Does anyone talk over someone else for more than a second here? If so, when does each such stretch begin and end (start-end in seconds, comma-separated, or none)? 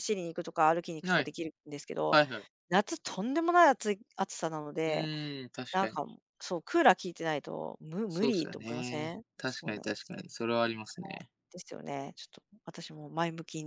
8.1-10.2